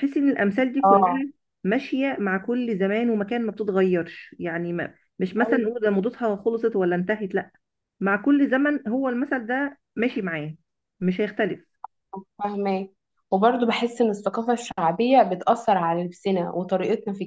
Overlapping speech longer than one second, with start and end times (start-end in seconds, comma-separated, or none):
none